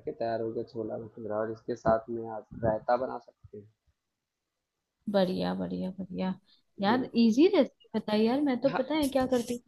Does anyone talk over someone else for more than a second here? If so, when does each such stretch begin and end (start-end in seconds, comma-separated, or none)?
none